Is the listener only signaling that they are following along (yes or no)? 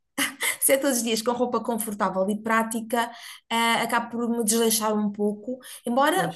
yes